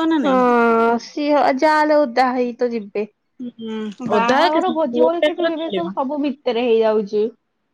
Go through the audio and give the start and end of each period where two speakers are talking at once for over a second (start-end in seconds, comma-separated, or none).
4.2-6.0